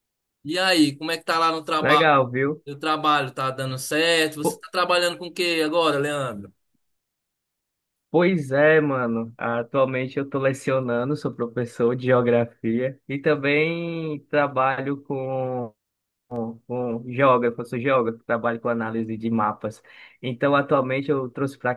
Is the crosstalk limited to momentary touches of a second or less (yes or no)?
yes